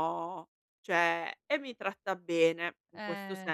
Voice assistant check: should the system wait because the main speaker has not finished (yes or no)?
yes